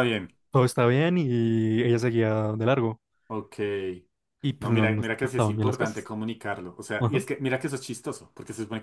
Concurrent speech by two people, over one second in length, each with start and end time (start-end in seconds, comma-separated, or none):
4.6-6.1